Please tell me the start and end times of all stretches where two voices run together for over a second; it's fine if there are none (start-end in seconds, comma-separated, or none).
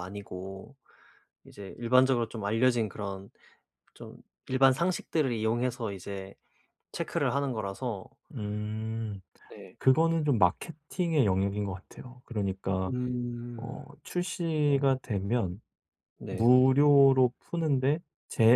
none